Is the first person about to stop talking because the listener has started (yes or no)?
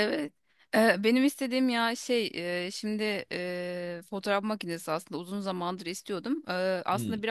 no